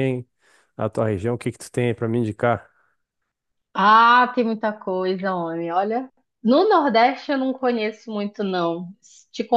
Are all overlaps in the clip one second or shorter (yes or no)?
yes